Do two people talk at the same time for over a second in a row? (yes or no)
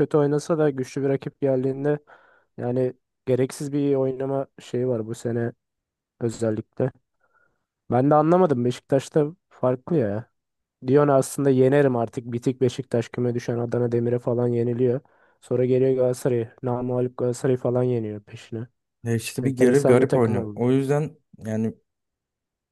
yes